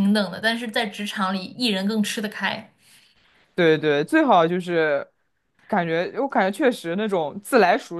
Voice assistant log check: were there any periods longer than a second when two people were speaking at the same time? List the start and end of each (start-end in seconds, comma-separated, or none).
none